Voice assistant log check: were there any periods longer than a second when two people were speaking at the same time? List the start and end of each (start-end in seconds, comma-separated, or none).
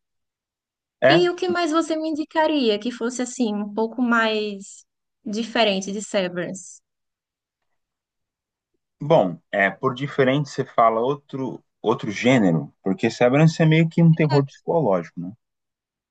none